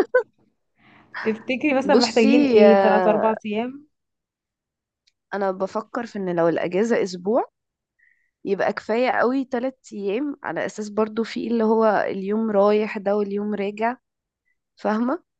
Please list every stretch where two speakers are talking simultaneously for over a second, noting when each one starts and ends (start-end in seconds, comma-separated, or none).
1.8-3.3